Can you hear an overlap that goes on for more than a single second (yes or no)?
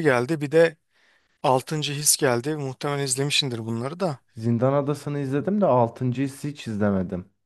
no